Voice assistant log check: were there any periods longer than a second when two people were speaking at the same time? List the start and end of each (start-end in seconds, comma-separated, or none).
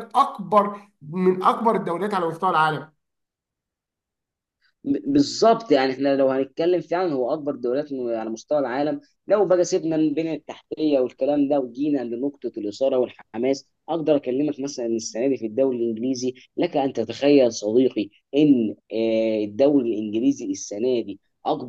none